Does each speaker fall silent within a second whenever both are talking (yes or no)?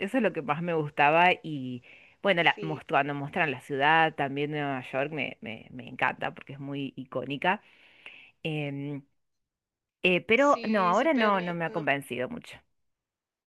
no